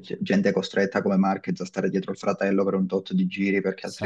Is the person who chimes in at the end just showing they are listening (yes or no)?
yes